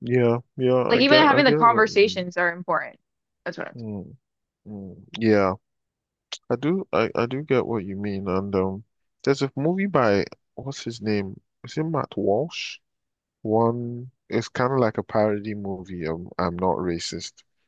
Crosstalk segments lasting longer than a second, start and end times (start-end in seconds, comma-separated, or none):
0.9-2.3